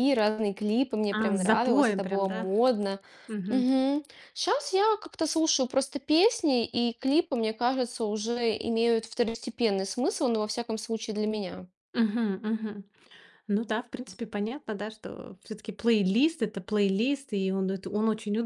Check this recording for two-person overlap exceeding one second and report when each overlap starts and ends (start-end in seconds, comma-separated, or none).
1.1-2.5